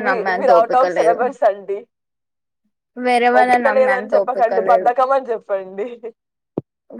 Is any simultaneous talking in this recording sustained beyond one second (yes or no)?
yes